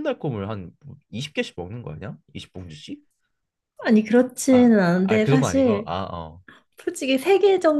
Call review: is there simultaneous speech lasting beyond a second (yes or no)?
yes